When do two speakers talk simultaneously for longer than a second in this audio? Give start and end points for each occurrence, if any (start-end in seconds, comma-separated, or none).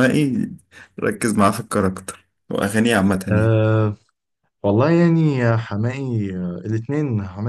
none